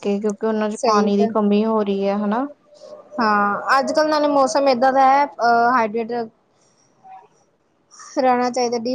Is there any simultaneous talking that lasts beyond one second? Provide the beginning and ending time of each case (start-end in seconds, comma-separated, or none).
none